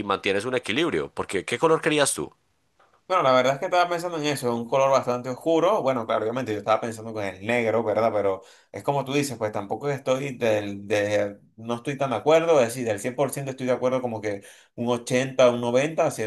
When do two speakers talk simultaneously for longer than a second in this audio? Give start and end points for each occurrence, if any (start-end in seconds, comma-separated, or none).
none